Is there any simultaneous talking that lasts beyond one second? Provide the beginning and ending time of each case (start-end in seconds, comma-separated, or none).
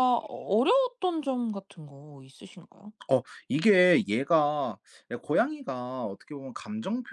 none